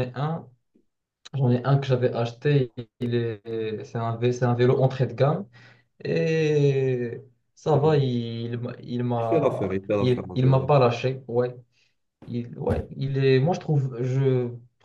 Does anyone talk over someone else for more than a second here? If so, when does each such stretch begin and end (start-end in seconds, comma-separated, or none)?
9.2-10.7